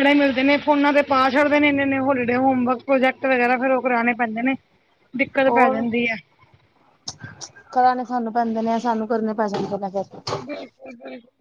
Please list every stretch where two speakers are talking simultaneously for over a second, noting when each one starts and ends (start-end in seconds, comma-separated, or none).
none